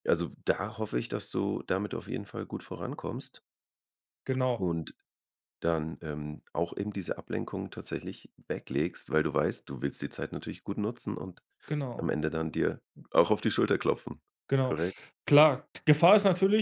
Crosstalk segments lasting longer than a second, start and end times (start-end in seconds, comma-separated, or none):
none